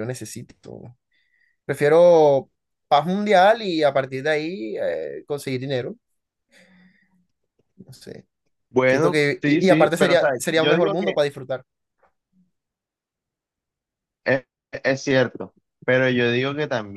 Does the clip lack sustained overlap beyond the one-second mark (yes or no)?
no